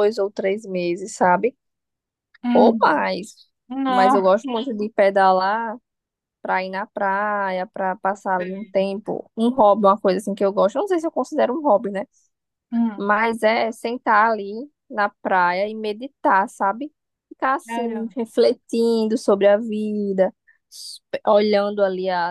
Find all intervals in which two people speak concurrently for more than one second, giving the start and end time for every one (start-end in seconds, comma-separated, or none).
none